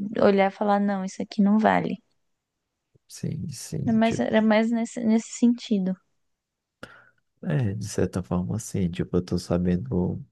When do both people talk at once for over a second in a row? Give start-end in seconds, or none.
none